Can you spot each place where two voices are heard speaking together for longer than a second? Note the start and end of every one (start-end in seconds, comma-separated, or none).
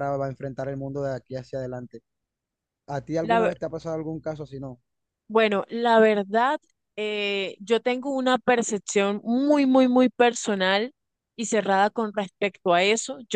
none